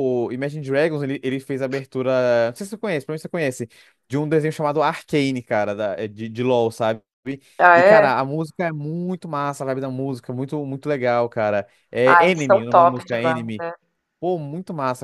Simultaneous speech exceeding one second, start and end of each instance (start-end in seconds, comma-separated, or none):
12.1-13.4